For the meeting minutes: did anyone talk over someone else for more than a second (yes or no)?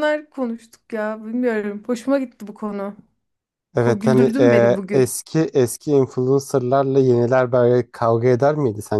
yes